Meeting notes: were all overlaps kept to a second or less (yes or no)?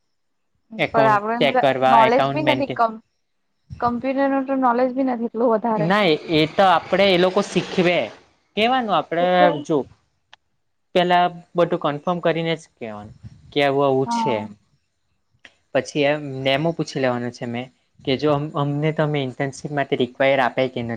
no